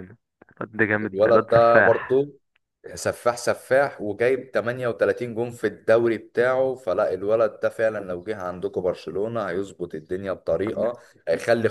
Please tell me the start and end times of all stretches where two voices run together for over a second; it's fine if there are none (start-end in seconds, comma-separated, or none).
1.0-2.3